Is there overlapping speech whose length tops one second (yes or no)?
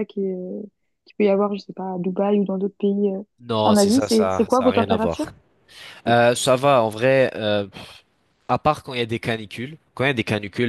yes